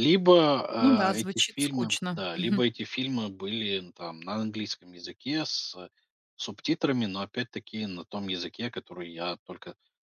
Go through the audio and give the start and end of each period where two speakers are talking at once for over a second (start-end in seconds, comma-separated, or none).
0.8-2.6